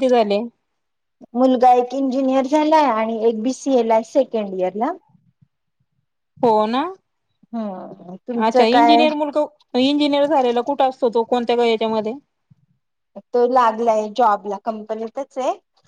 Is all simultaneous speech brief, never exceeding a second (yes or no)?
yes